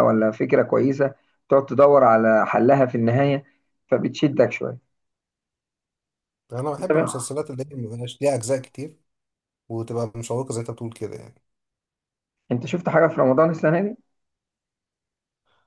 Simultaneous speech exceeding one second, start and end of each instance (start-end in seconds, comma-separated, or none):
none